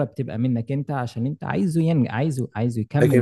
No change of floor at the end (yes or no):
no